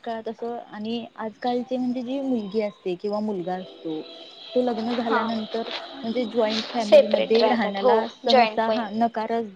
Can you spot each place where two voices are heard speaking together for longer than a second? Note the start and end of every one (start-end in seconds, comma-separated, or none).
6.8-8.8